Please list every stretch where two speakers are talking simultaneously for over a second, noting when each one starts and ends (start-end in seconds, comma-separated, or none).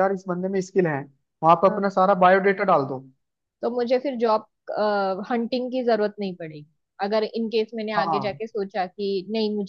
none